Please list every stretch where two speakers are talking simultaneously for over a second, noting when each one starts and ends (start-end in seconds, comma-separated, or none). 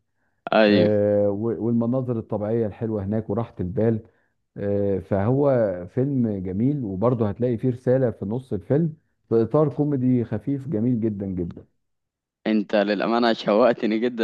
none